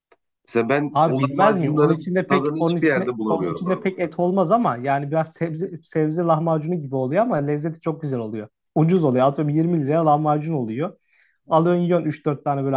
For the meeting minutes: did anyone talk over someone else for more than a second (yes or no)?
yes